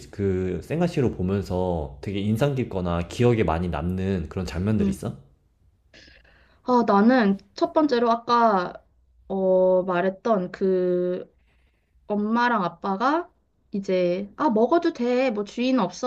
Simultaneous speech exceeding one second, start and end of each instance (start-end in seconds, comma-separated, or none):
none